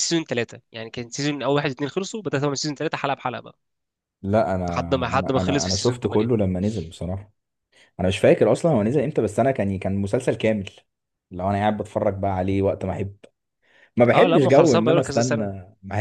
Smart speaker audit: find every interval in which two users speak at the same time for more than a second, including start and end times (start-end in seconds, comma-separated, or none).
4.7-6.3, 14.1-15.5